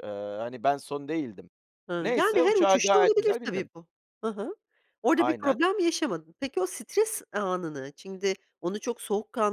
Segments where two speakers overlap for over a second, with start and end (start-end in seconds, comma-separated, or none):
2.0-3.7